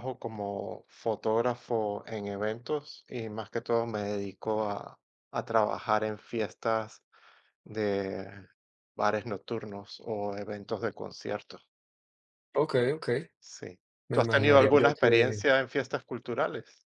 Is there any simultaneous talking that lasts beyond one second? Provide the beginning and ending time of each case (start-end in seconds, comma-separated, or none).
14.1-15.4